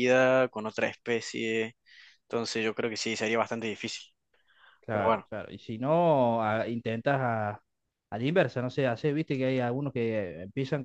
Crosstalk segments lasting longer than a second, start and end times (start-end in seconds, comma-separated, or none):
none